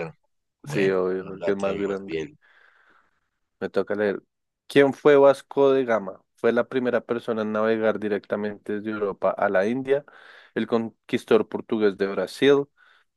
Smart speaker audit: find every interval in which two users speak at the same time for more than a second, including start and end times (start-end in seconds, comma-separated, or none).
0.6-2.2